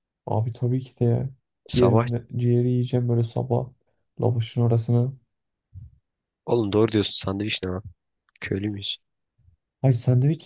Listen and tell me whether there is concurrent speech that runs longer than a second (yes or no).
no